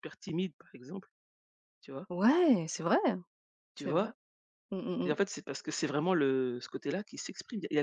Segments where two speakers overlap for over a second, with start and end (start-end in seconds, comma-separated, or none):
none